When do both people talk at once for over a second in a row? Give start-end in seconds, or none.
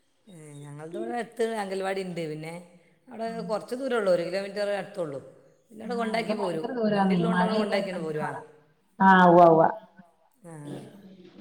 5.9-8.4